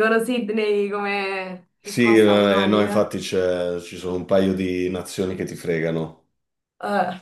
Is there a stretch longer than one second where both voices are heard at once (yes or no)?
yes